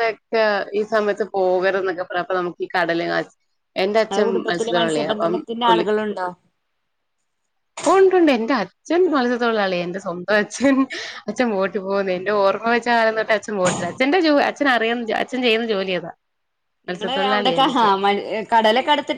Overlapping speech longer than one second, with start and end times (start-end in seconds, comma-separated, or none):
4.1-5.8